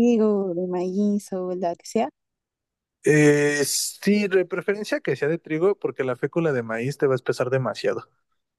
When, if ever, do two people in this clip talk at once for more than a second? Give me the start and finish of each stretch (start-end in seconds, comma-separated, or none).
none